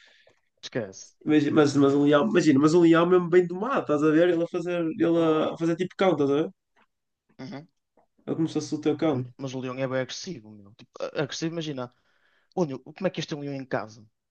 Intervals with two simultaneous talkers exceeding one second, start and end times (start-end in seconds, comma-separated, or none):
none